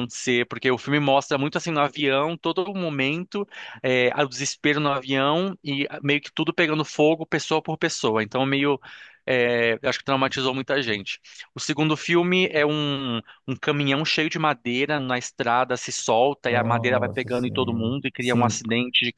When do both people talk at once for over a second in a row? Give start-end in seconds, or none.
16.4-18.6